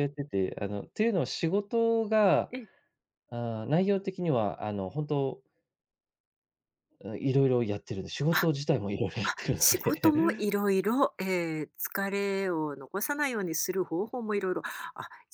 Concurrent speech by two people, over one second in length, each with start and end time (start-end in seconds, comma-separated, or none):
9.2-10.5